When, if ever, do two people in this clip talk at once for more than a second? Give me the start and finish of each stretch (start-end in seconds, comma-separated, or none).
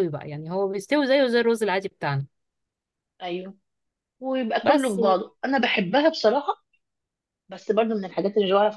none